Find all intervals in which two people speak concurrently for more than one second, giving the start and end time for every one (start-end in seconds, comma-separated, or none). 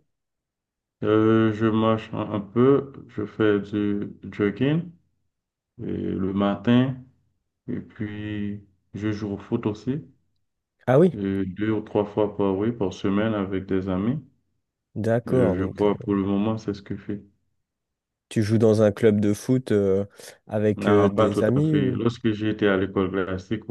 20.8-22.0